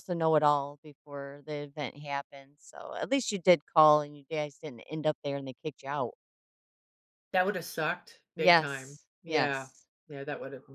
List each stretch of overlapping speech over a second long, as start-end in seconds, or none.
8.3-9.7